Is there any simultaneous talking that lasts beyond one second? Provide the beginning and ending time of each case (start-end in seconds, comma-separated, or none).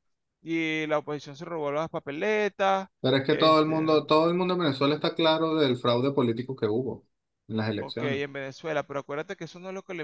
none